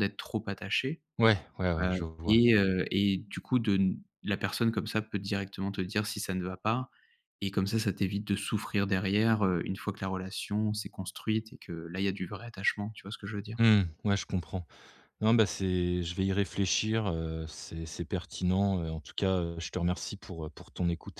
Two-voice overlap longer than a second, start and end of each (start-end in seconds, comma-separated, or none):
none